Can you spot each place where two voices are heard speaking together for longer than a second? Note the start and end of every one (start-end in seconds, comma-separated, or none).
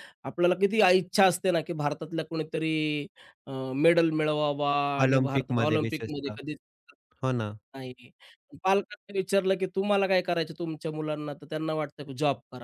5.0-6.4